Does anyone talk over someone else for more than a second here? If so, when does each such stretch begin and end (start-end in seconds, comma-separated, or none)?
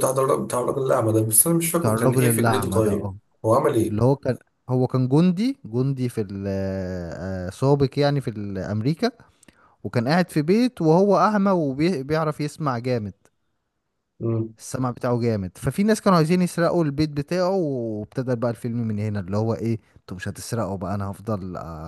1.7-3.2